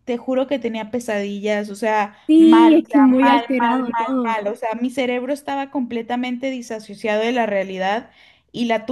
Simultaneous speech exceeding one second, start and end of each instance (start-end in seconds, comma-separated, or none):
2.3-4.1